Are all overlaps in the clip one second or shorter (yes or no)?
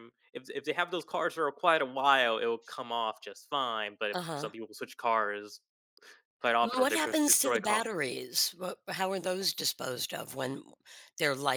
no